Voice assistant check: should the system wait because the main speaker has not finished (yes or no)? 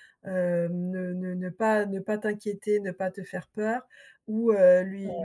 yes